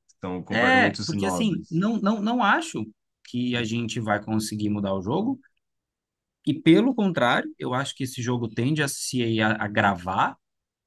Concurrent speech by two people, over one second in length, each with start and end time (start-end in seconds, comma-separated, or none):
0.5-1.8